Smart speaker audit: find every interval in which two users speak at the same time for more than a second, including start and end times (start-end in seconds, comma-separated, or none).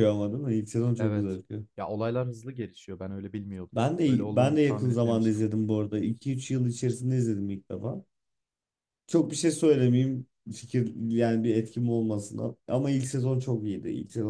3.7-5.4